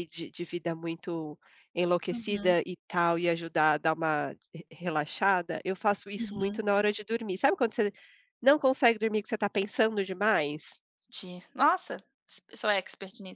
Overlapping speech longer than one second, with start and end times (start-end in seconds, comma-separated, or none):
none